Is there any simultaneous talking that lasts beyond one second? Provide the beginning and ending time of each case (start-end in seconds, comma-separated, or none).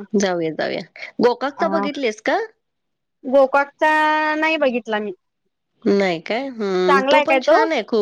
none